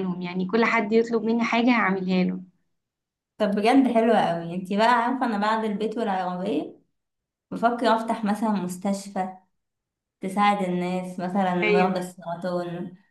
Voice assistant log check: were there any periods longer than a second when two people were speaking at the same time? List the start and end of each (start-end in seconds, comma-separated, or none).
none